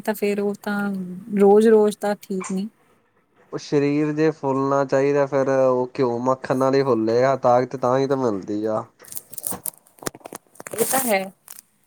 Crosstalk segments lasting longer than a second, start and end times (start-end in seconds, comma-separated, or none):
none